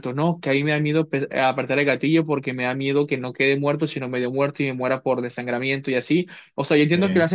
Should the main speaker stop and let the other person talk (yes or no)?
no